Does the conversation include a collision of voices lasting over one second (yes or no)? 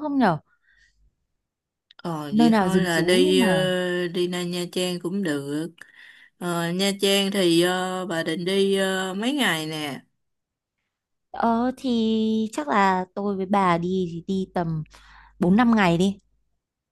yes